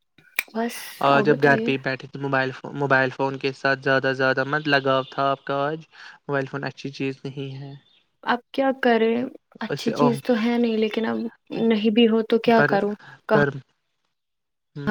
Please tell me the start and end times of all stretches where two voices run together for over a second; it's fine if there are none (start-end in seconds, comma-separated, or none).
none